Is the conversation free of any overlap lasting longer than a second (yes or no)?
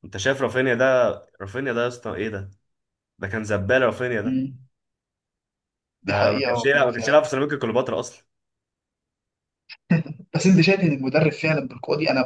no